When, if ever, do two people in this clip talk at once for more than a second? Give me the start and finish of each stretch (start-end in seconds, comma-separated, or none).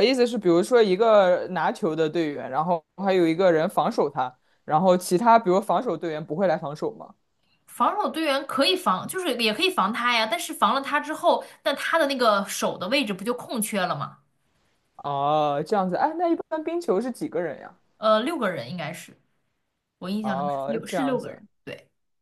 20.2-21.4